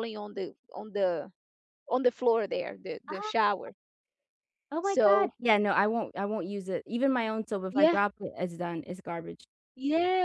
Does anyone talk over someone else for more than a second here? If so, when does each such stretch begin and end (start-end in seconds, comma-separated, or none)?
none